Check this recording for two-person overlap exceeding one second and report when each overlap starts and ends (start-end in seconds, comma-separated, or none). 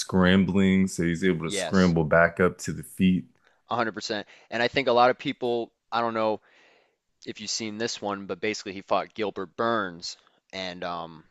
none